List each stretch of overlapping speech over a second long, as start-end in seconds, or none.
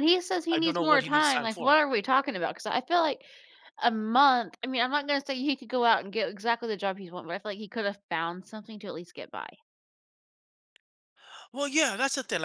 0.5-1.7